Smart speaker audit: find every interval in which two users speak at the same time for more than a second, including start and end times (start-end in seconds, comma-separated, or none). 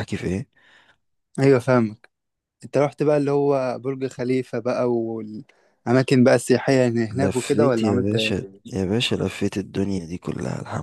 7.1-8.8